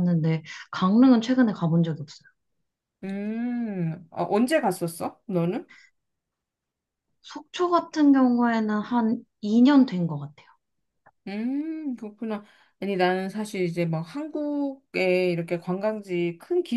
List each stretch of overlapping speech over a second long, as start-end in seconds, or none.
none